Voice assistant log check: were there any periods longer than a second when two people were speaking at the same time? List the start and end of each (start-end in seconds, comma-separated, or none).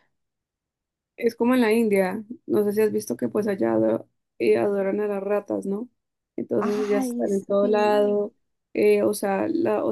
6.6-8.1